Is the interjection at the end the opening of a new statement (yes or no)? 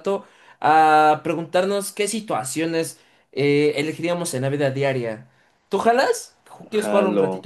yes